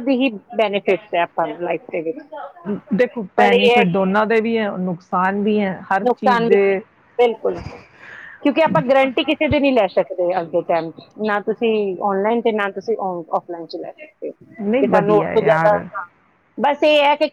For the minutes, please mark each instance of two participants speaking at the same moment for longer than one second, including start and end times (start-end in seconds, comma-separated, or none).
14.6-15.8